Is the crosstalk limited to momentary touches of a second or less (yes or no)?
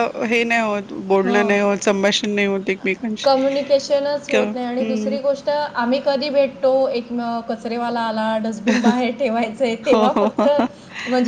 yes